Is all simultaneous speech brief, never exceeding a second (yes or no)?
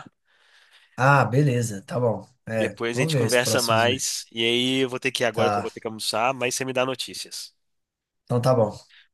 no